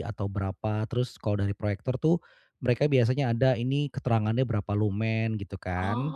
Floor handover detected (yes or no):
no